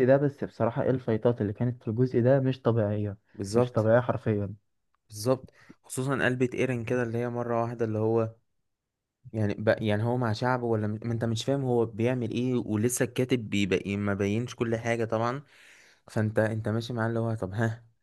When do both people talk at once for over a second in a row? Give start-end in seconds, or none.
none